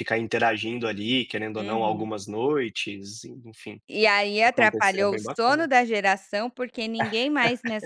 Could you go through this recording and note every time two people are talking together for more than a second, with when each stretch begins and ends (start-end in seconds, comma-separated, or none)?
4.4-5.7